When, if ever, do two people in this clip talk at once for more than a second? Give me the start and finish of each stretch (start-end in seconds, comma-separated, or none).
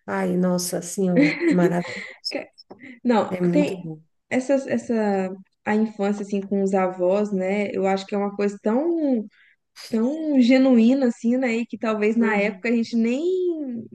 none